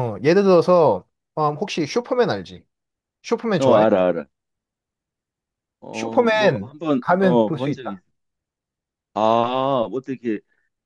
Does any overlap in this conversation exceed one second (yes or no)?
yes